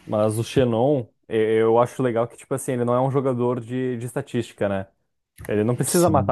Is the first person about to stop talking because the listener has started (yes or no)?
no